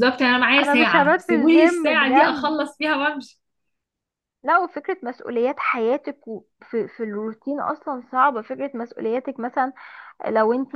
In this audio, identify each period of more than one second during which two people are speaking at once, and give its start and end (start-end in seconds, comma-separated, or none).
0.6-2.6